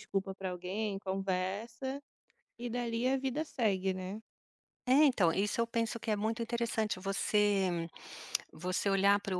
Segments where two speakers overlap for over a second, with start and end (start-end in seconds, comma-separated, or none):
none